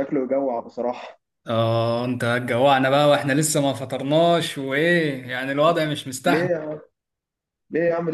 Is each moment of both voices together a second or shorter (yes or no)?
yes